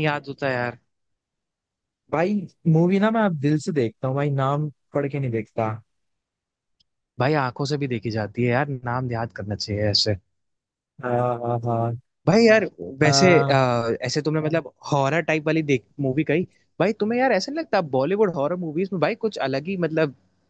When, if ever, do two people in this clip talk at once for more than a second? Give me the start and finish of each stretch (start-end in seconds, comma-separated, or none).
none